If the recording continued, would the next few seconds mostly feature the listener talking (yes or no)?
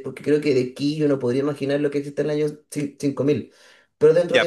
yes